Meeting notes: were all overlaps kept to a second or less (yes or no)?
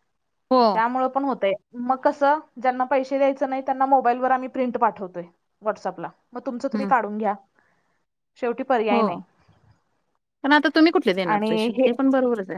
yes